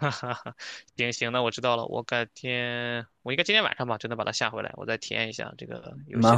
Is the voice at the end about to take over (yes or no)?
yes